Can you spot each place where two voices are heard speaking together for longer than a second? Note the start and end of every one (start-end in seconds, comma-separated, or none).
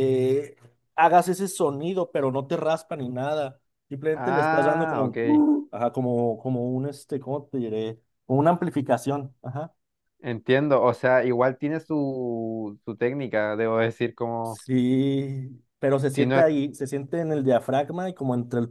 4.1-5.5